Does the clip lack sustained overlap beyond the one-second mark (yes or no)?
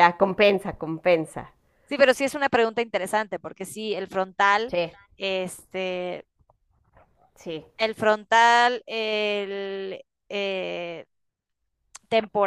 yes